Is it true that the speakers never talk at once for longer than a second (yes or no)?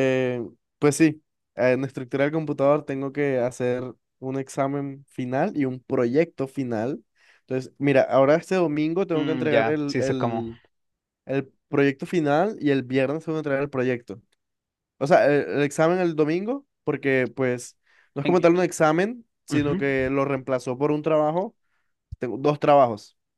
no